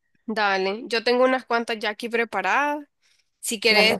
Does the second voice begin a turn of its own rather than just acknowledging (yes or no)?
no